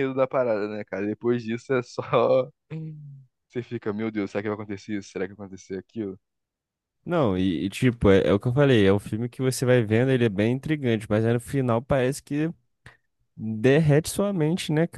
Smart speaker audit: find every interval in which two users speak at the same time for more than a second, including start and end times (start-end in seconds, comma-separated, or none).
none